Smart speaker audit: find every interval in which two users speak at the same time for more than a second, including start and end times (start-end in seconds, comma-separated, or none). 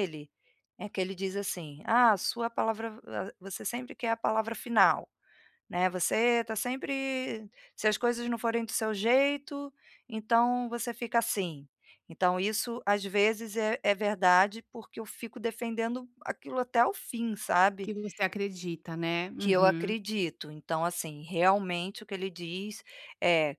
none